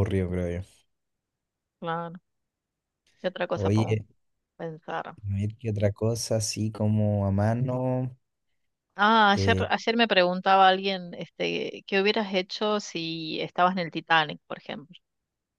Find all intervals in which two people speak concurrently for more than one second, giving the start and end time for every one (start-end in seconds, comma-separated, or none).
none